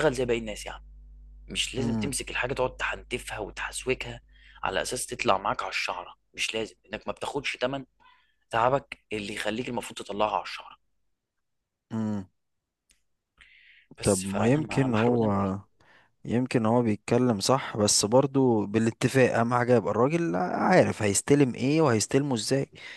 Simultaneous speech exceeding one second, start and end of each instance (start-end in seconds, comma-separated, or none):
14.0-15.6